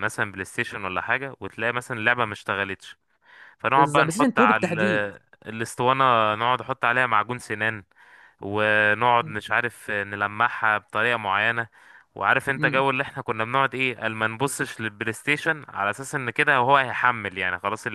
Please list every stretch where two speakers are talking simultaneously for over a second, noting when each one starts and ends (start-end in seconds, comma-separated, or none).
3.7-5.0